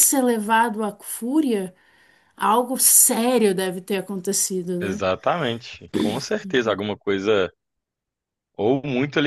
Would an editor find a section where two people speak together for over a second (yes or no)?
no